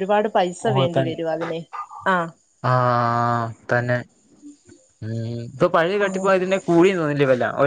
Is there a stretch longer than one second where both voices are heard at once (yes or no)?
no